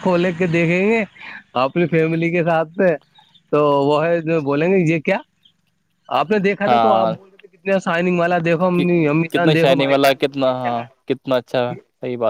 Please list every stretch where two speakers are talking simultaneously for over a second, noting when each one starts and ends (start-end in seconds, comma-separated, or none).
8.8-11.7